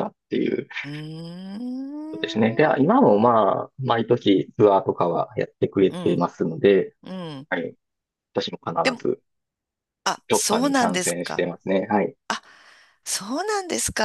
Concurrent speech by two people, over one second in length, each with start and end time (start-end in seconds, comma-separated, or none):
10.3-11.5